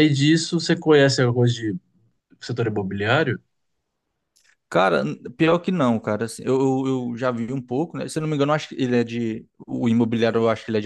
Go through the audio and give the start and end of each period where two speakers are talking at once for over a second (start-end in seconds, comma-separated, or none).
none